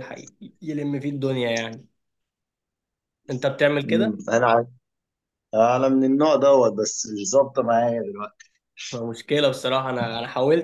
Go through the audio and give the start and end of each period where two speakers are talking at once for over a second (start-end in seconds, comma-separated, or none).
none